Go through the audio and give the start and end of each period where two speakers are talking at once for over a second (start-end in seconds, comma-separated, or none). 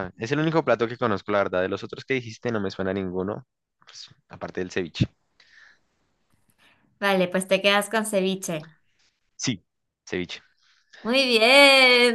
none